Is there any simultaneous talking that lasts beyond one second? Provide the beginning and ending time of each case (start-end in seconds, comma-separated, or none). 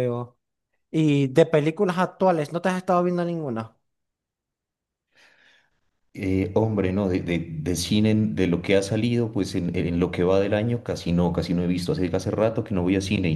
none